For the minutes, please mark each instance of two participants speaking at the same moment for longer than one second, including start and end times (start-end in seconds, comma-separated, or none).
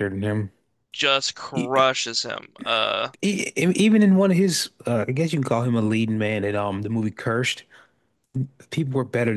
none